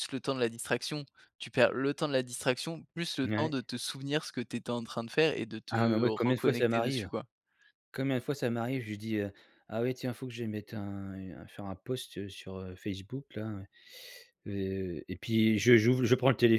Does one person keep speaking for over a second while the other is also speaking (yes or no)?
yes